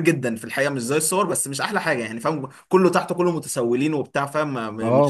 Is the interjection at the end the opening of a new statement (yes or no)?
yes